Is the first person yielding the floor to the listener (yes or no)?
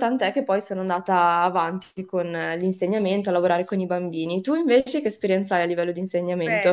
yes